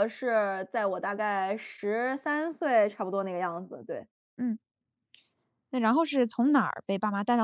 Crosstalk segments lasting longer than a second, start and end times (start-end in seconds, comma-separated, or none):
none